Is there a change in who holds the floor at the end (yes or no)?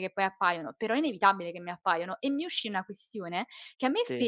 no